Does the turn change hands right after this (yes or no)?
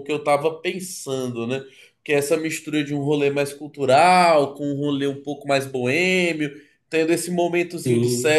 no